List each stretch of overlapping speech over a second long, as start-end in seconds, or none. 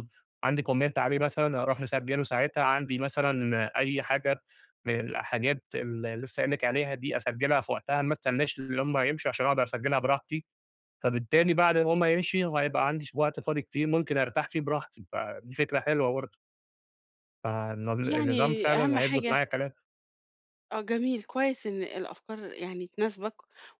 18.0-19.4